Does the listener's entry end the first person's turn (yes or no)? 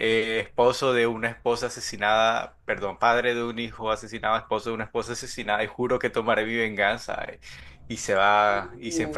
no